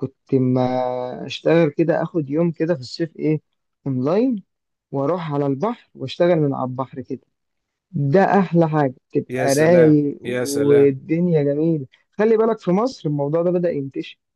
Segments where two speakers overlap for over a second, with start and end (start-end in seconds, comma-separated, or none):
9.3-10.9